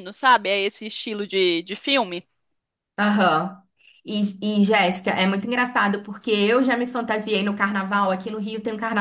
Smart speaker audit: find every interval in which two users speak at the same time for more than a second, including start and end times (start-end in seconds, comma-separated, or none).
none